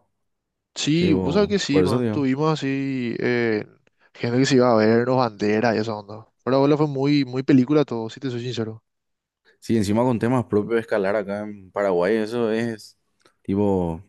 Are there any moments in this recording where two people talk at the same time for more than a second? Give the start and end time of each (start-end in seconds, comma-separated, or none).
0.9-2.3